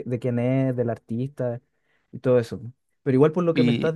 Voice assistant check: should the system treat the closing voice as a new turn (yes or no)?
no